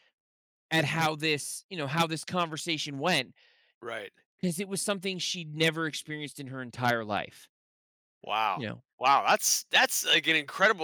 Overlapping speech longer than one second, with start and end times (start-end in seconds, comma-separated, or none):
none